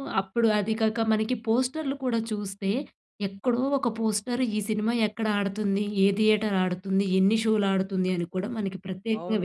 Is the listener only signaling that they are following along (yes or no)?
no